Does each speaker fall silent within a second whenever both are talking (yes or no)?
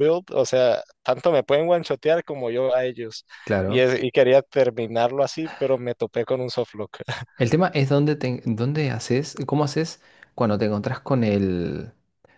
yes